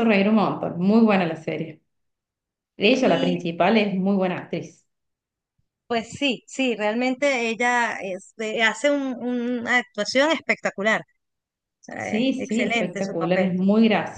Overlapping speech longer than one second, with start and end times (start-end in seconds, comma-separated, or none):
12.0-13.5